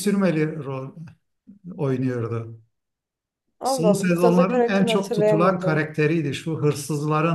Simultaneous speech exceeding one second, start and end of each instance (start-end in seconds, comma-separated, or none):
3.6-5.9